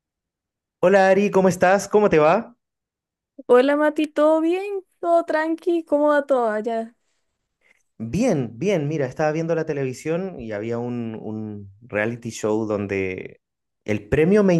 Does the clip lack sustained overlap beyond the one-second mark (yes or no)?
yes